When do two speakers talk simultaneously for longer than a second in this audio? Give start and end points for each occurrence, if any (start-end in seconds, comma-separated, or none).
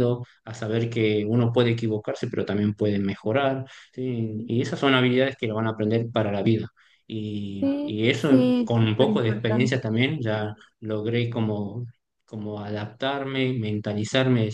7.6-9.8